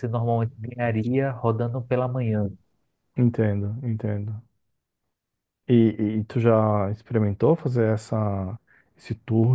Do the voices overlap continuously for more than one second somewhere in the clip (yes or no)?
no